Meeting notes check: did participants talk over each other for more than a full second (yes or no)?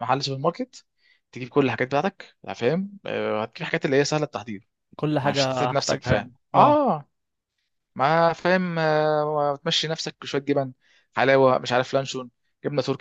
yes